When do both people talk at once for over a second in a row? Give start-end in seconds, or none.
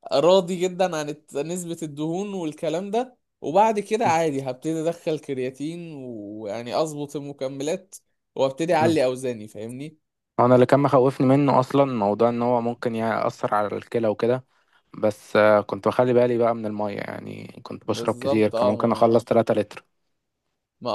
17.9-19.1